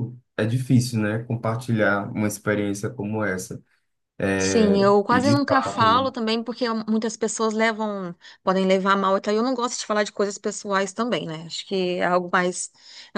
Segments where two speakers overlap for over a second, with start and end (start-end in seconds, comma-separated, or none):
4.4-6.1